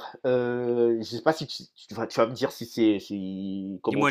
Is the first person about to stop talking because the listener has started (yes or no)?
yes